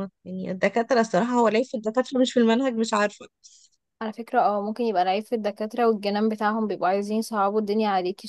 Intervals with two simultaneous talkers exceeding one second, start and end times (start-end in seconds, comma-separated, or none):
none